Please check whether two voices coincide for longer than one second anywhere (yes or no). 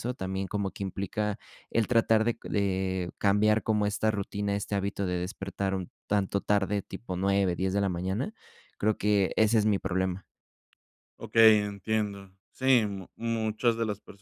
no